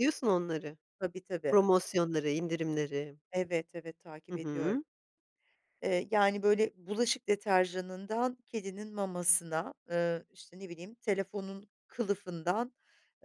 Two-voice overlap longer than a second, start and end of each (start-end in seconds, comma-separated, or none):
none